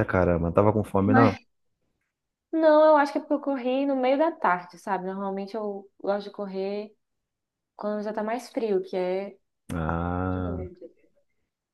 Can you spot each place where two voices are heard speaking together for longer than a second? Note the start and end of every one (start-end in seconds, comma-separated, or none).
none